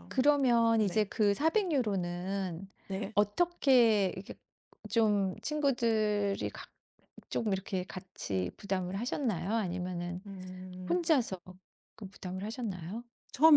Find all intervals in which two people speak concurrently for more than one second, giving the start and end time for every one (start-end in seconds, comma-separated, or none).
none